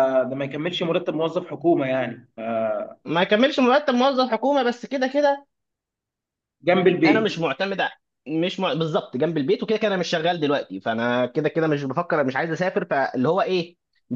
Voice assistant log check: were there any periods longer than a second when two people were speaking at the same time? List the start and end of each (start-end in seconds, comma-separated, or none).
none